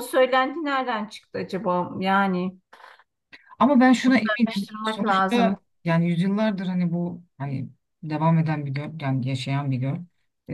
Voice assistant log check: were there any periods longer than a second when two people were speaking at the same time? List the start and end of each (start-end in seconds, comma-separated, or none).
4.0-5.6